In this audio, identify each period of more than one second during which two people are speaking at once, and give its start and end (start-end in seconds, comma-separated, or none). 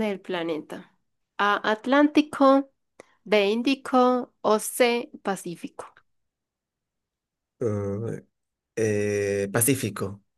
none